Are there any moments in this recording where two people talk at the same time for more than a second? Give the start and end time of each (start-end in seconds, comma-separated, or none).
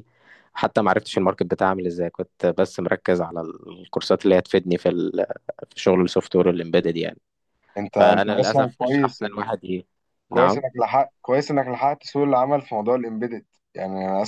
7.9-9.2